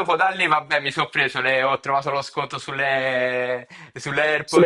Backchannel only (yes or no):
yes